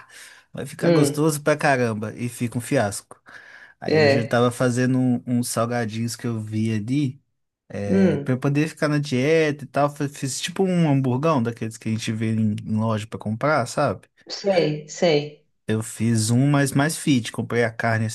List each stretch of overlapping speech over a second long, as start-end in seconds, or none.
none